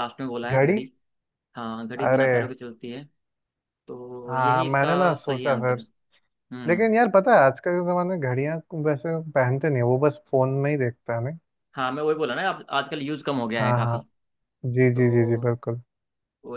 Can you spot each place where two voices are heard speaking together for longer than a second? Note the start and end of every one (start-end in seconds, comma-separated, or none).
4.3-5.8